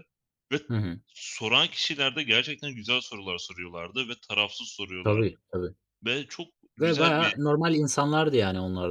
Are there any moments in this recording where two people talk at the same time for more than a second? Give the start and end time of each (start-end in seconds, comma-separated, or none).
none